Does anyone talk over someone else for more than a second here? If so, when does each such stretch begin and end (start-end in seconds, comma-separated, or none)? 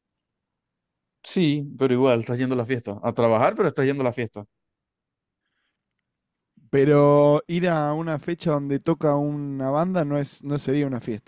none